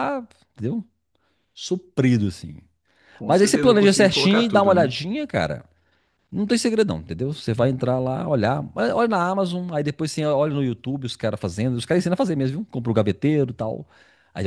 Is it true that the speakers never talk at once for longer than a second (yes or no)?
no